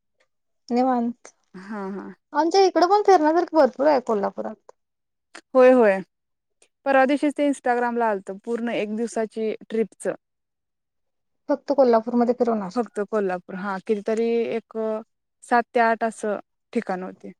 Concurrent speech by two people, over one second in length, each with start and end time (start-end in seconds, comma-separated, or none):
none